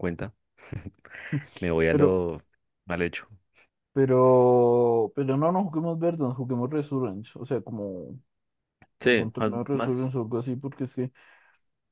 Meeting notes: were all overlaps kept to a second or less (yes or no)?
no